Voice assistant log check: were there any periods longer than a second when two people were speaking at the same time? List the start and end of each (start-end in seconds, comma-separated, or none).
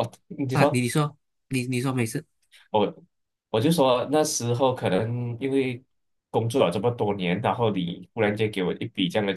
none